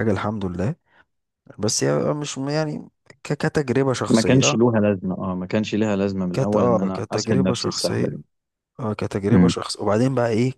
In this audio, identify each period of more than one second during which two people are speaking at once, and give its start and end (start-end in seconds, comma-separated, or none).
6.3-8.2